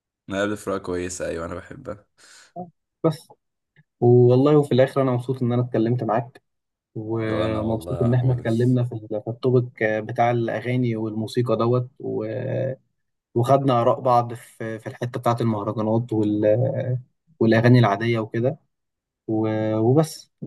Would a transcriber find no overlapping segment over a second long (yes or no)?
no